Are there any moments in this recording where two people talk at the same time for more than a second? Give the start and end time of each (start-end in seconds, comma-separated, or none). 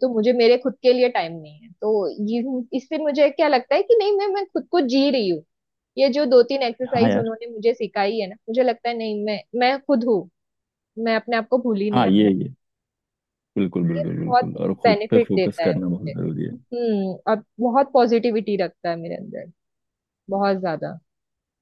13.9-16.1